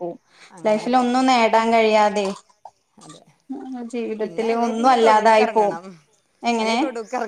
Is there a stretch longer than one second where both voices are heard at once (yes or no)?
yes